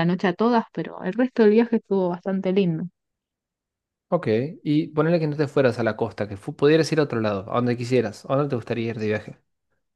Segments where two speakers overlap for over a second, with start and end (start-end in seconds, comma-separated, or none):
none